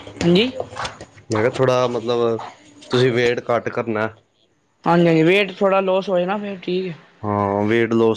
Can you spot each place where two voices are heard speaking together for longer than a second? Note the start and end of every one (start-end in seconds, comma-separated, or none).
none